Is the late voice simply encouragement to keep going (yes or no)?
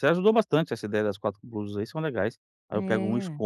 yes